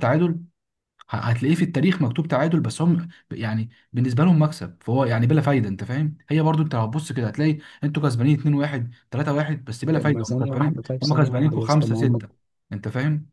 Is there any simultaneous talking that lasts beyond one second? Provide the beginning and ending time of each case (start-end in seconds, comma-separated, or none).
9.9-12.2